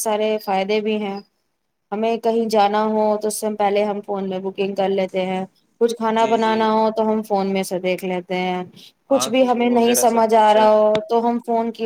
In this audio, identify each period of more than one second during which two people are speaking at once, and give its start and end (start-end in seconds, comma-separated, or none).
9.2-10.7